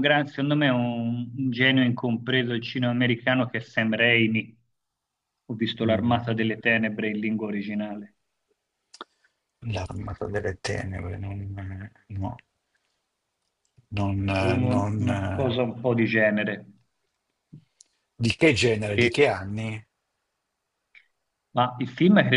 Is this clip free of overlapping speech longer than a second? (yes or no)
yes